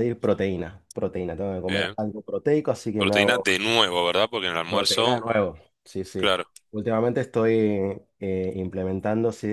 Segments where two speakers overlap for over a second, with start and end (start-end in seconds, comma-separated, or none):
none